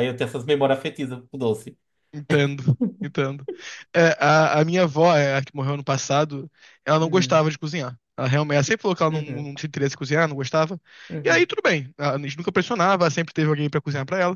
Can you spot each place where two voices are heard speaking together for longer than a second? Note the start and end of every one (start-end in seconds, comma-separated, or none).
none